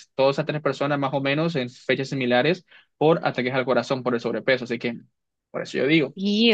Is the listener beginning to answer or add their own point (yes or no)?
yes